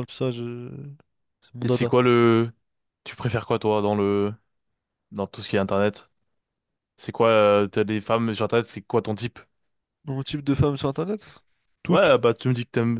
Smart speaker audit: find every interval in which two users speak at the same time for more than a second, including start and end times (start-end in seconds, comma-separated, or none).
none